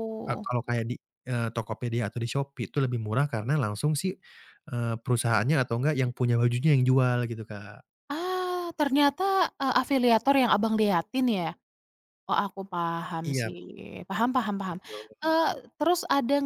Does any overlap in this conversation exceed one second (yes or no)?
no